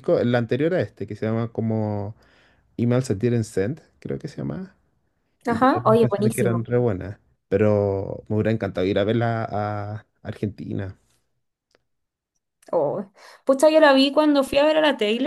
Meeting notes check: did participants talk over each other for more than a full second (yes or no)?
yes